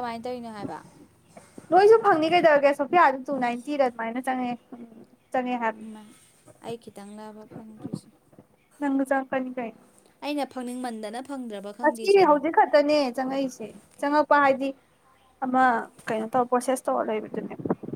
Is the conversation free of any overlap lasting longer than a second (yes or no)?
yes